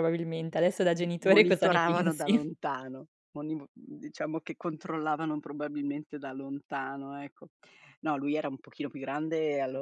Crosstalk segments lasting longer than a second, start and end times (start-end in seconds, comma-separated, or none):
0.9-2.5